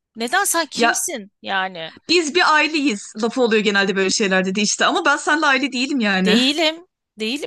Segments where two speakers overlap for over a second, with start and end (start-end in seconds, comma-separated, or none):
none